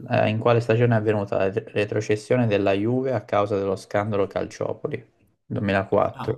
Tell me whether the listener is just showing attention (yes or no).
yes